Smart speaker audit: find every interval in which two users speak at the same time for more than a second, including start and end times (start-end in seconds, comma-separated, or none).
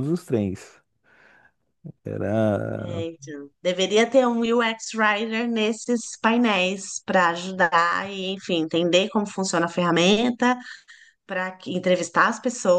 none